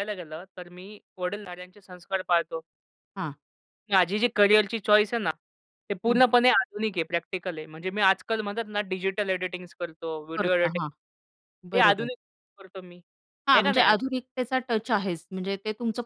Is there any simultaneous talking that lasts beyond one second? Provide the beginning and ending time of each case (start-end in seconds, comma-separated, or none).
none